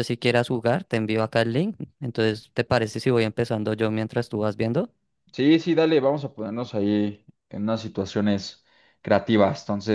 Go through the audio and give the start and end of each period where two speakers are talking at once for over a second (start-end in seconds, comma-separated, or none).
none